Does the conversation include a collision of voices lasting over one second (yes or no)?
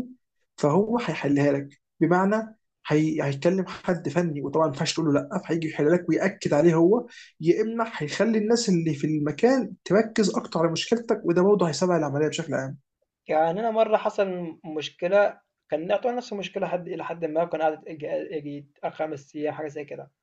no